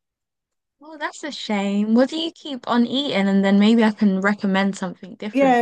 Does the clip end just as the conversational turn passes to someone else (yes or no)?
yes